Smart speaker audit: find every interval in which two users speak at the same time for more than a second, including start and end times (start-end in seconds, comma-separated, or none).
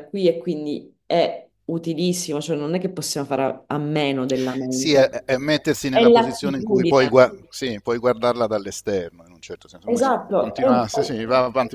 5.9-7.2, 9.8-11.2